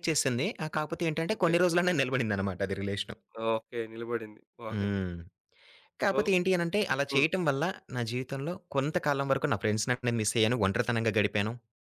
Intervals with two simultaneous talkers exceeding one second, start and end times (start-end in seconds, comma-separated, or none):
none